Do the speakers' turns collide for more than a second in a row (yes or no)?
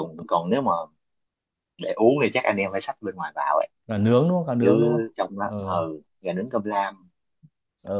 no